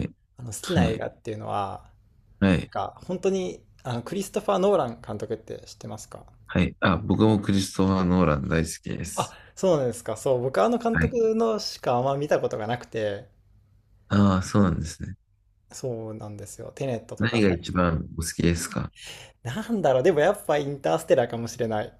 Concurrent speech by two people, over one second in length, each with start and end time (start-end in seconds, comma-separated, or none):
none